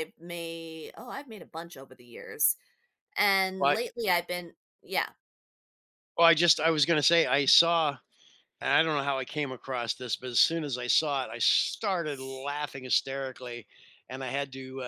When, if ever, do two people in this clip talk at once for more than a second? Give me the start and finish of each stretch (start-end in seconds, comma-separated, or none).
none